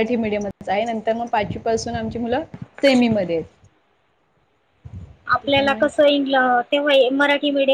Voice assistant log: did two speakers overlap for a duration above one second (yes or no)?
no